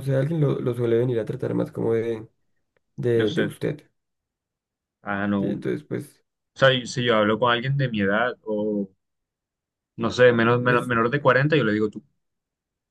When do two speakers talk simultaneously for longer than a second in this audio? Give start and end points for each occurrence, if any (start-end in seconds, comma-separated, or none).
none